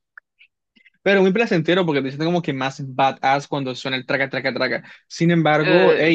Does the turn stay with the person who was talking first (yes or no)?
yes